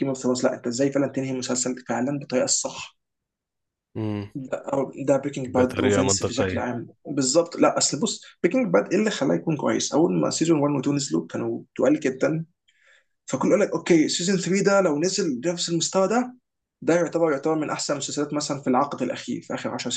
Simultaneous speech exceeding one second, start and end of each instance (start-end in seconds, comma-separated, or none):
5.5-6.7